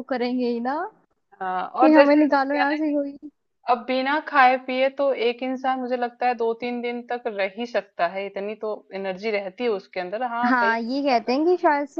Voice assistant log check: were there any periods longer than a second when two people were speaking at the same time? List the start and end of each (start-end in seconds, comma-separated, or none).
1.8-3.1